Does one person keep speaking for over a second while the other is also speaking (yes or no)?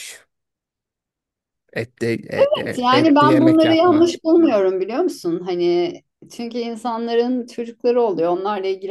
yes